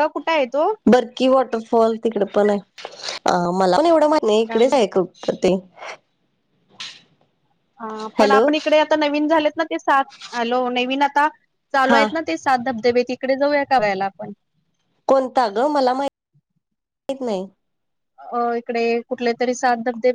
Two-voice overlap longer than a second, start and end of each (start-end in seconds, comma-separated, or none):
none